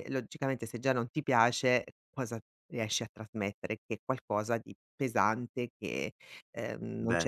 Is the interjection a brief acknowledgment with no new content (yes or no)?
yes